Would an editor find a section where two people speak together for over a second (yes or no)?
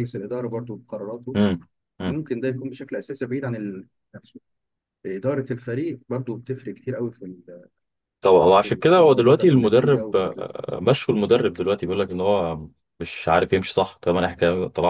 yes